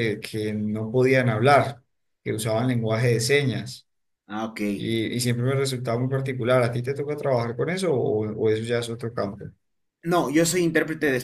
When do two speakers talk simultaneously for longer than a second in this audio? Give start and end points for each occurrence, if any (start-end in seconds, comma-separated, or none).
none